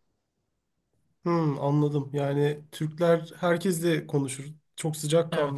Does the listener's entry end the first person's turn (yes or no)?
no